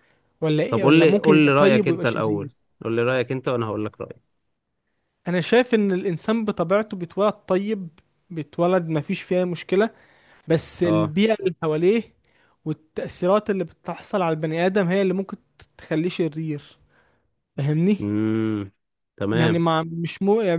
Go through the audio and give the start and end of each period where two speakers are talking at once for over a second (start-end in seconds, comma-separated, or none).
0.7-2.5